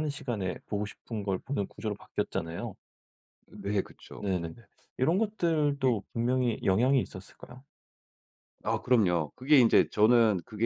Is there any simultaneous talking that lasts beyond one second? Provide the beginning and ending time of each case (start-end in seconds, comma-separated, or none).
none